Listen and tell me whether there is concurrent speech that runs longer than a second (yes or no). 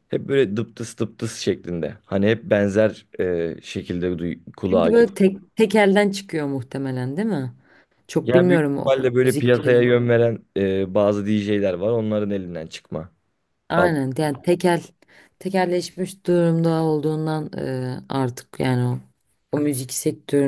yes